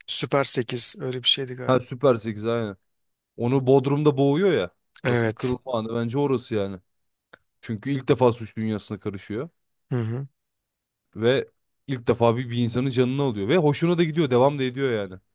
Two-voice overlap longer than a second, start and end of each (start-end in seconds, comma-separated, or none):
none